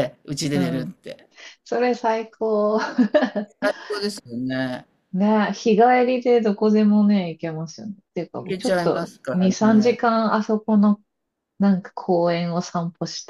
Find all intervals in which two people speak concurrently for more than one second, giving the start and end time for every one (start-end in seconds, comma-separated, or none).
8.4-10.0